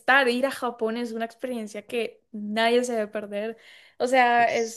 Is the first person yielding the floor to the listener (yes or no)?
no